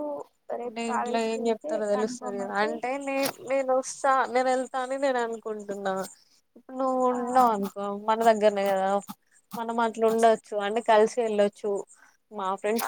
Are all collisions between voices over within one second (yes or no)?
no